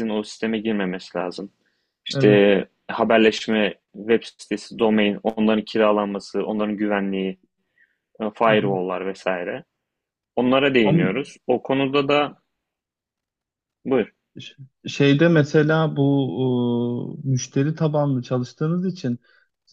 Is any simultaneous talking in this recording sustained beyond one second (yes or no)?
no